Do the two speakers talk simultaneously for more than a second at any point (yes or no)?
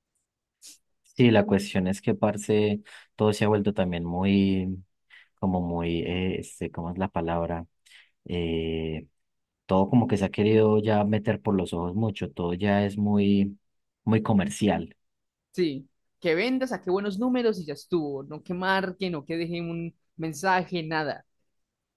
no